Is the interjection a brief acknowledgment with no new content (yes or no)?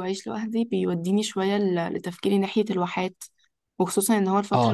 yes